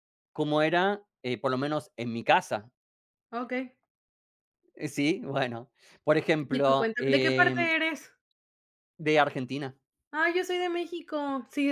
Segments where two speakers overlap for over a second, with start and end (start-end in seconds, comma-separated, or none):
6.5-7.7